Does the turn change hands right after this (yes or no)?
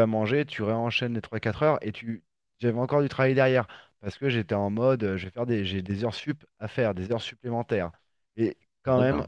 no